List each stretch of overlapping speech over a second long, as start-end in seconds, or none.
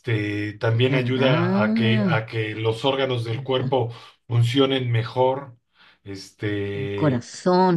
0.8-2.1